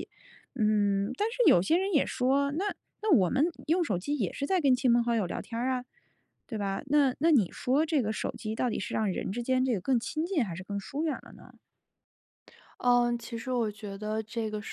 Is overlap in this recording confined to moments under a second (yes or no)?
yes